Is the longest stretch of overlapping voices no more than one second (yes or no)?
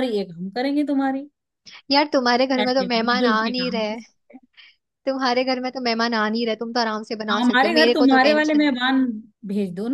no